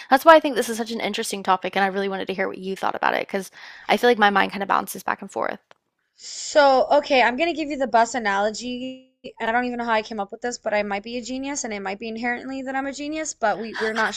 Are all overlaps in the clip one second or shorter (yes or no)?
yes